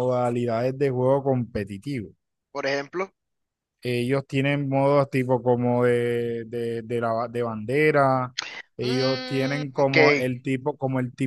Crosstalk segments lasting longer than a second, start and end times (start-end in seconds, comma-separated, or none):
8.8-10.3